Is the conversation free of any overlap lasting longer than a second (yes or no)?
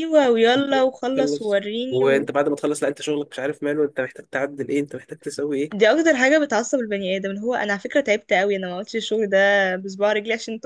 no